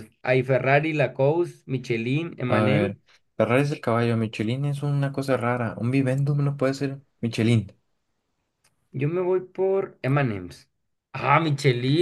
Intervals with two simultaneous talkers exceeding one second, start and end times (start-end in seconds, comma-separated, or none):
none